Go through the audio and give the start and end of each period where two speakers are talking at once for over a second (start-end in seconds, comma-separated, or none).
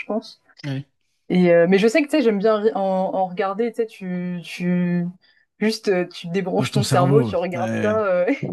6.6-8.0